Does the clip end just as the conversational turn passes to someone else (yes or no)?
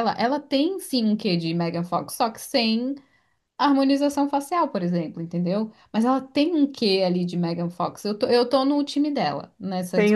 yes